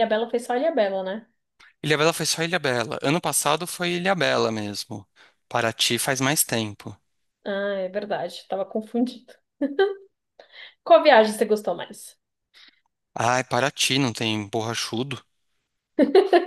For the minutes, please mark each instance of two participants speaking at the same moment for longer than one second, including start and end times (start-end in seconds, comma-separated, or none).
none